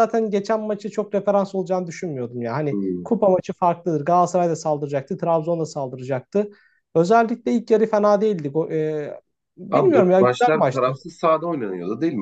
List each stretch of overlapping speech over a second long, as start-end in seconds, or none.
9.7-11.0